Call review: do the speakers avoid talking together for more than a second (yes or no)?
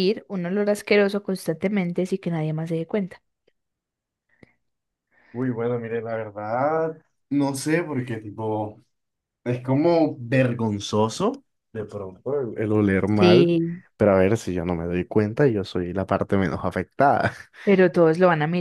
yes